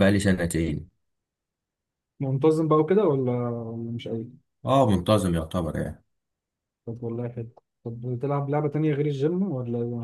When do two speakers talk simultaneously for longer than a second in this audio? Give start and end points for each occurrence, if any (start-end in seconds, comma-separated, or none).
none